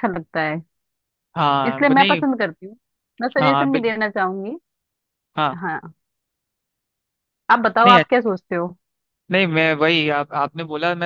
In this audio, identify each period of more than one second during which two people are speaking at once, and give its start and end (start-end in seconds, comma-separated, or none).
none